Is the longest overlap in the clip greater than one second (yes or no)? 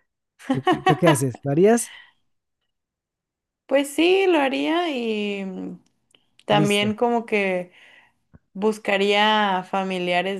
no